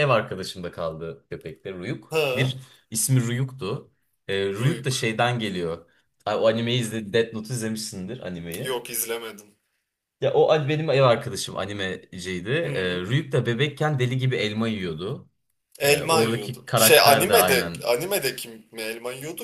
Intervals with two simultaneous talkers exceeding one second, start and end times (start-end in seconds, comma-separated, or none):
15.8-17.9